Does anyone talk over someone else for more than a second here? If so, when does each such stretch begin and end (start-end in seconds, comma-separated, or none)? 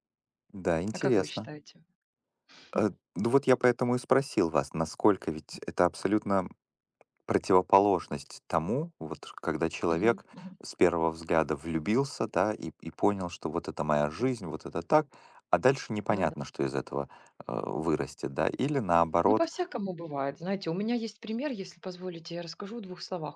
none